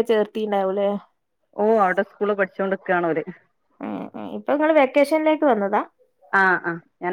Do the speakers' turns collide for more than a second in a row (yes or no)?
no